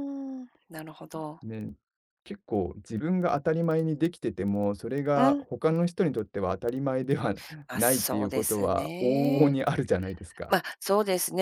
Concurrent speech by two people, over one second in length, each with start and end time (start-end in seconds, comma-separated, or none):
7.8-9.6